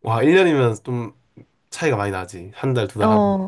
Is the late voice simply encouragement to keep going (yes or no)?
no